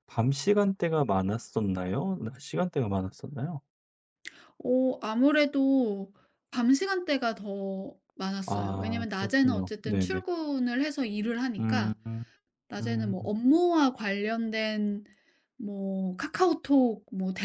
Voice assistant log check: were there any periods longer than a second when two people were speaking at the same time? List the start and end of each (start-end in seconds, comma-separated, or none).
8.5-10.2